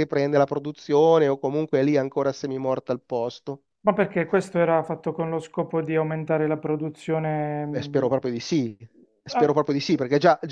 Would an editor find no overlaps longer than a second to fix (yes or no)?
yes